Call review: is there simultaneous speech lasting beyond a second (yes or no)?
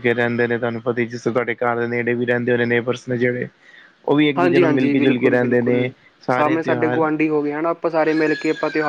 no